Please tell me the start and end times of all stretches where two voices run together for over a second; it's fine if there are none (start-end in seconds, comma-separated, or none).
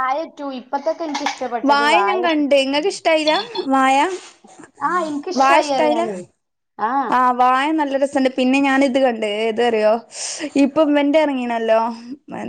none